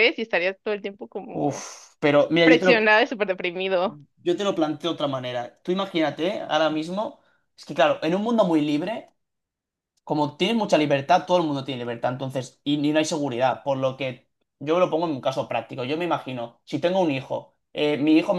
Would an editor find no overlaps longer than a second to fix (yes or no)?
yes